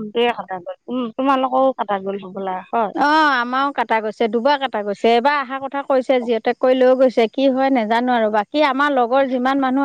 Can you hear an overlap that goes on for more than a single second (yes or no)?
no